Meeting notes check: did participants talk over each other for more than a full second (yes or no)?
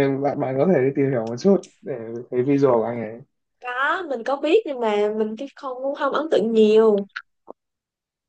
no